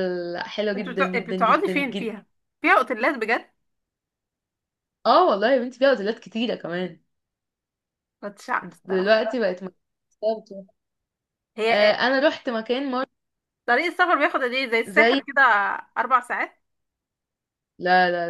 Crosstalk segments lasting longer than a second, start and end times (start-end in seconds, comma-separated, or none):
0.8-2.1